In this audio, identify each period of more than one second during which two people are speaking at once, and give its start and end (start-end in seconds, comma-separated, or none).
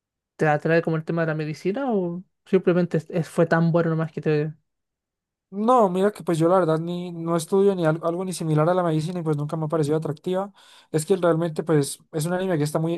none